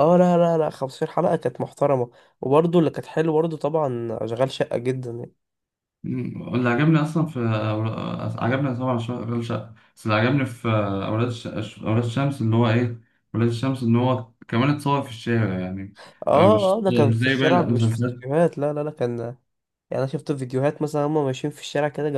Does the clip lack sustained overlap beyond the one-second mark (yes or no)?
no